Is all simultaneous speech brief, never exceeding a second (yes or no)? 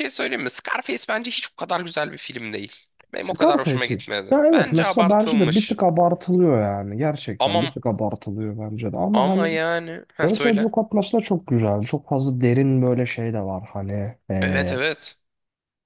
no